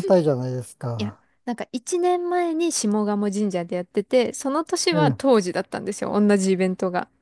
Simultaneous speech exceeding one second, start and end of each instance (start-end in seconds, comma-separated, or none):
none